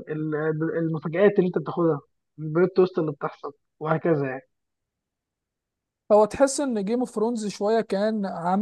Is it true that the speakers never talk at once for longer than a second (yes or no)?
yes